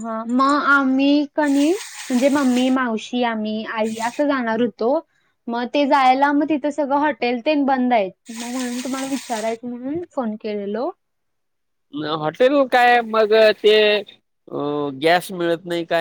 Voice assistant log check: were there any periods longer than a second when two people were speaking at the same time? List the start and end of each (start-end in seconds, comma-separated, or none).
none